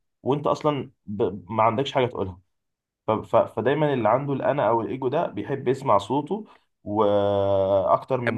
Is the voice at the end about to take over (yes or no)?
no